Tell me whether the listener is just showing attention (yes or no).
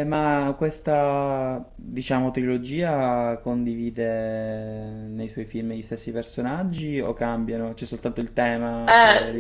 no